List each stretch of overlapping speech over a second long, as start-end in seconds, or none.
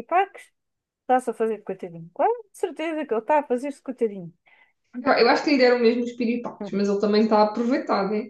none